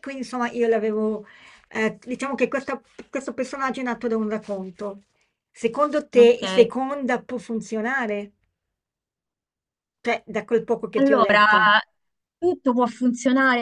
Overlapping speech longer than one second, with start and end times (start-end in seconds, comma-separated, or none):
none